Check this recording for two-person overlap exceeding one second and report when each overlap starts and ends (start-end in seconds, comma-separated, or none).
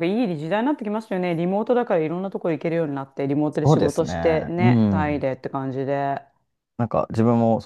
3.5-5.2